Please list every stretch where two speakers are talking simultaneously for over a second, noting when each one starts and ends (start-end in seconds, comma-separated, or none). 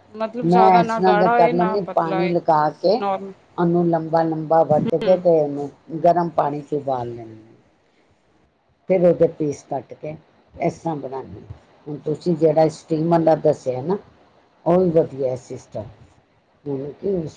0.5-2.4